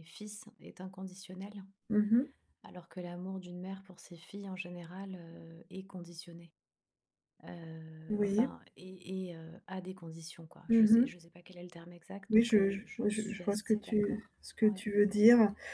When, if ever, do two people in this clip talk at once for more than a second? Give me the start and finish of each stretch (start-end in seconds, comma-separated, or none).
12.3-14.8